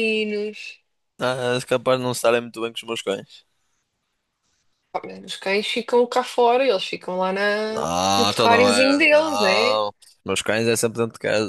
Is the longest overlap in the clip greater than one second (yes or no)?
yes